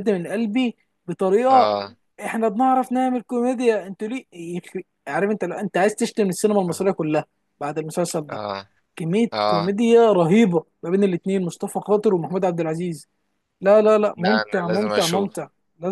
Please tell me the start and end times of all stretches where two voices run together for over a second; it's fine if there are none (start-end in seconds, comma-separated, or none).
14.2-15.4